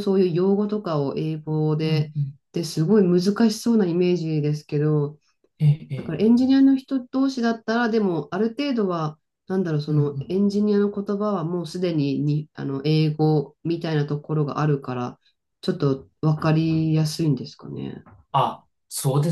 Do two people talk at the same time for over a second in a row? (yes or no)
no